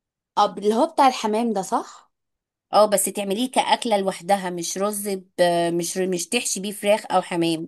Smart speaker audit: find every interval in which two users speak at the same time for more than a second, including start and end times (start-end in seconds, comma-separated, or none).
none